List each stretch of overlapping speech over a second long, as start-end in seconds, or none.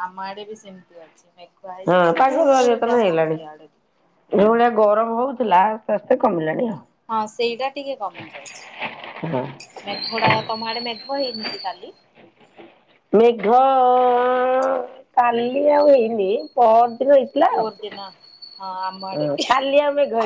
1.9-3.9